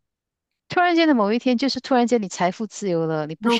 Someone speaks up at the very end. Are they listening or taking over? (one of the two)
listening